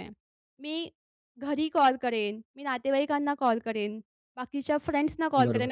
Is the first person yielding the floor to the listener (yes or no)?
no